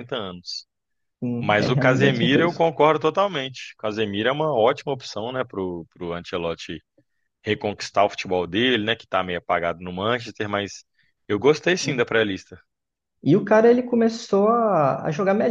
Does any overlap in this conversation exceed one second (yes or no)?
yes